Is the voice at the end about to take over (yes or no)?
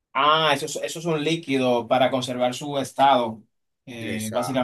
no